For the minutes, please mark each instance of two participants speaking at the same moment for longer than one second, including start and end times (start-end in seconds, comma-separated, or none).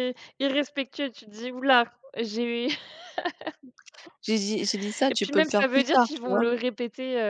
5.1-6.4